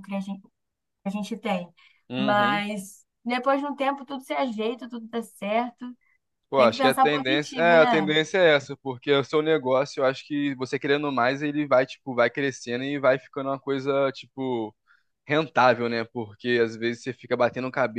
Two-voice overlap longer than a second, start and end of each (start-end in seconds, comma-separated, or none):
6.6-8.1